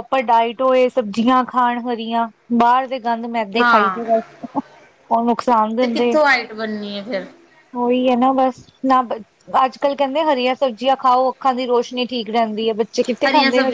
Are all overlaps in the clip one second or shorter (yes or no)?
yes